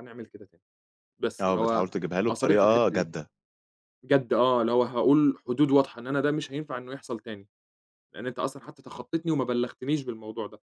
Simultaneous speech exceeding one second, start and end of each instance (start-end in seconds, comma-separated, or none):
1.4-3.1